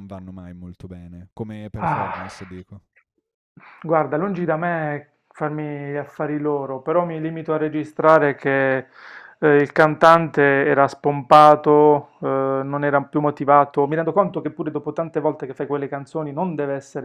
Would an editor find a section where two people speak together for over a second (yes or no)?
no